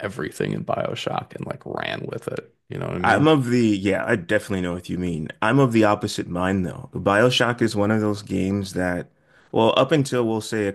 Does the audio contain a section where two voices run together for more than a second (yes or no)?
no